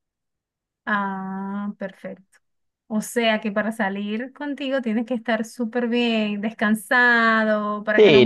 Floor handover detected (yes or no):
yes